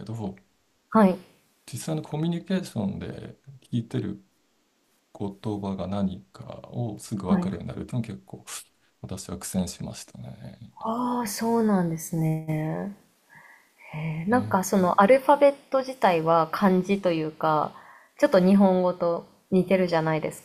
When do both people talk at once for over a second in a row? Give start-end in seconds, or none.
none